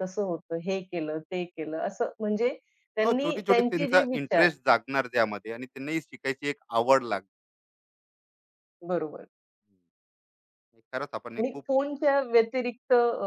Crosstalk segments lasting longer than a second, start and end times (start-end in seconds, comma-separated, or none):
3.0-4.5